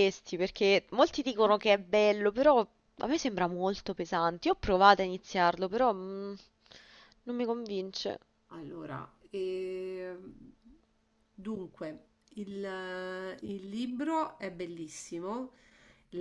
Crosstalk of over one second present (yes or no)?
no